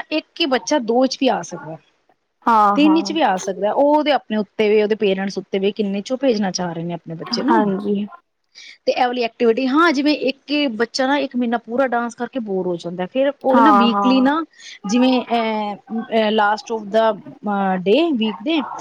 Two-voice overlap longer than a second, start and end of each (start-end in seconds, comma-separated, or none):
none